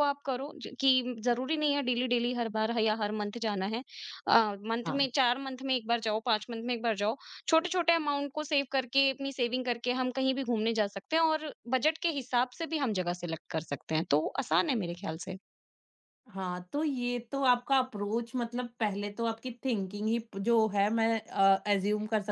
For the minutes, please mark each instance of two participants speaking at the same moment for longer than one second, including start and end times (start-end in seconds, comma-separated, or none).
none